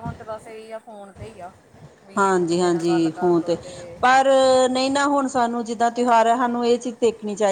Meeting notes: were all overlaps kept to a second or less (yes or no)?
no